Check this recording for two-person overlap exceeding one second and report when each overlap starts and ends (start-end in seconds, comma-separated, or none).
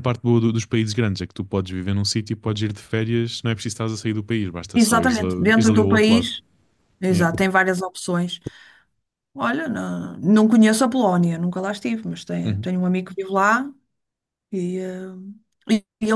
4.7-6.3